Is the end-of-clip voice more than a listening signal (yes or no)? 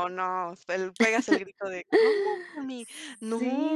yes